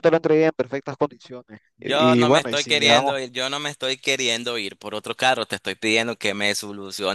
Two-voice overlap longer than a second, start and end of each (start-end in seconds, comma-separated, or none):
1.8-3.2